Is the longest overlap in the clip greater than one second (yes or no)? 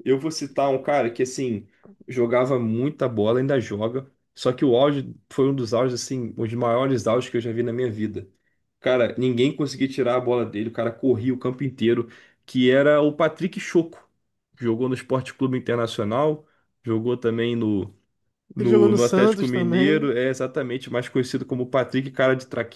yes